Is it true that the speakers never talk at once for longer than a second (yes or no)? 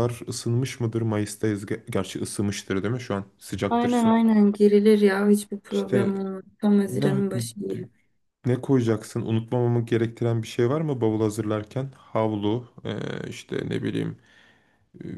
yes